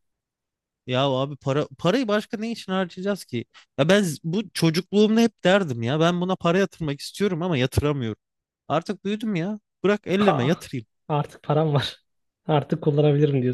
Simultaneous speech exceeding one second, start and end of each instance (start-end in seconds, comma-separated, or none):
none